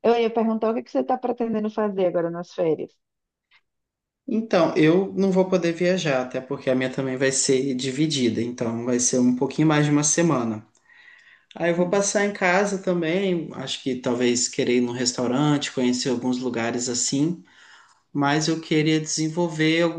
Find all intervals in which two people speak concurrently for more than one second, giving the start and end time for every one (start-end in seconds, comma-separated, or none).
none